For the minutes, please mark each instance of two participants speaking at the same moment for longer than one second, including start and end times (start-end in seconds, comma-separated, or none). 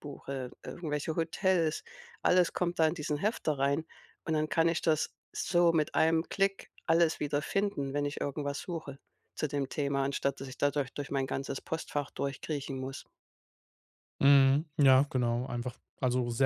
none